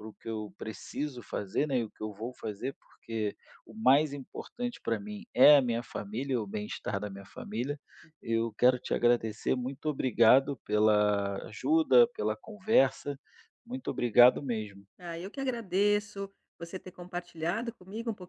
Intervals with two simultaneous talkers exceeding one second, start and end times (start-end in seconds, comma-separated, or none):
none